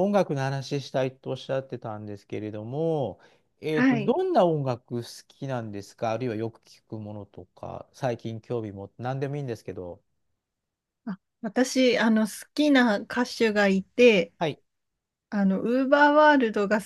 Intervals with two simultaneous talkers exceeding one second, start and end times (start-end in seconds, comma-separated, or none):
none